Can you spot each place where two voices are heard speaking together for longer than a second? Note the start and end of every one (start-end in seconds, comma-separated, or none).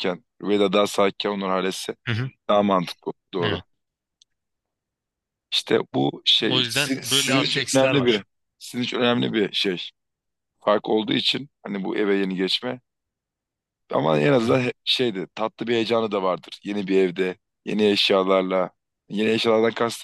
6.4-8.2